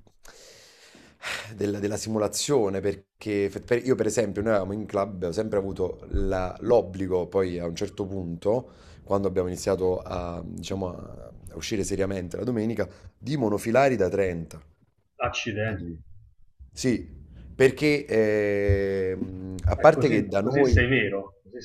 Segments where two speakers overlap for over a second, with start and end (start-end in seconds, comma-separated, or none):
19.8-21.0